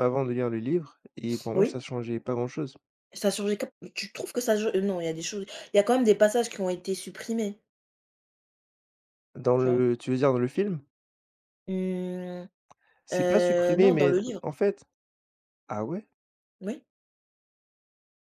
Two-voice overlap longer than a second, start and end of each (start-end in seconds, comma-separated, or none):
13.1-14.4